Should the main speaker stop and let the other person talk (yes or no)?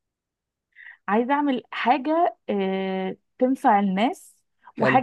no